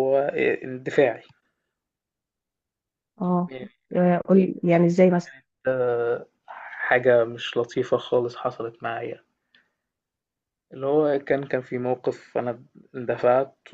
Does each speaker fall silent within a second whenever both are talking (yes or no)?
yes